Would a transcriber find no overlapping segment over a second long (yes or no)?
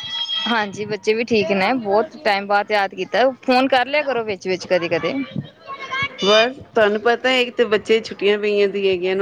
yes